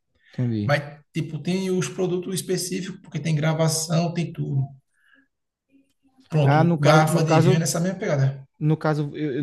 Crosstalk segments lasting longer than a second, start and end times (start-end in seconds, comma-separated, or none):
6.4-7.7